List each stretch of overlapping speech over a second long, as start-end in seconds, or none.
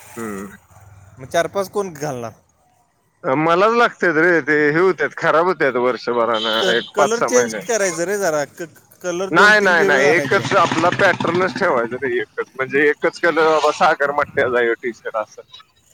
none